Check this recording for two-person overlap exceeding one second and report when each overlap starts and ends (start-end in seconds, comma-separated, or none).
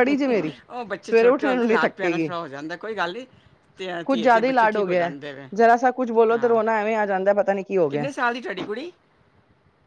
1.0-2.3